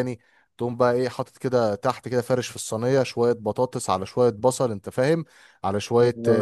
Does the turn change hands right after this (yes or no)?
no